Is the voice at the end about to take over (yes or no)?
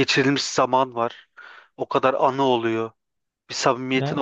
no